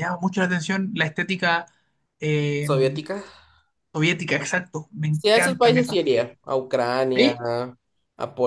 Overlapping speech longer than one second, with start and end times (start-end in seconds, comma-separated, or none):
5.1-6.3